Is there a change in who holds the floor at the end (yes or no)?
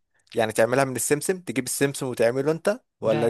yes